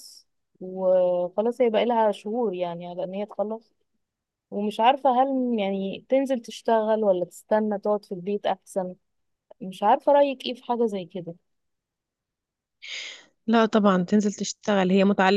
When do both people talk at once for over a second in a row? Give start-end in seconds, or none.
none